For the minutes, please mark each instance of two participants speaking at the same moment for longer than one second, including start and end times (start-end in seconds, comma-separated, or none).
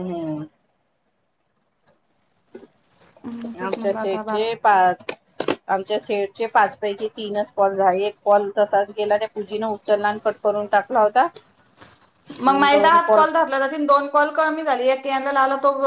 3.6-5.0